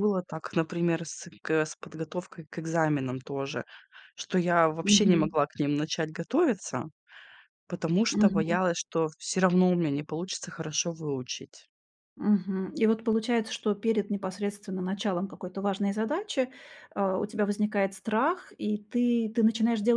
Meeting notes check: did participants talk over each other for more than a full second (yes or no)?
no